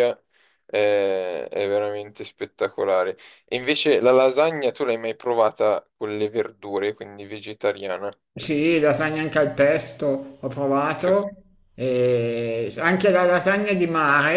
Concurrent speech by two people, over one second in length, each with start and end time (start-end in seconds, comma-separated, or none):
none